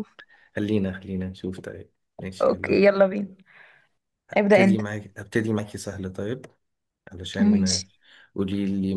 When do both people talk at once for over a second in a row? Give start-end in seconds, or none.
none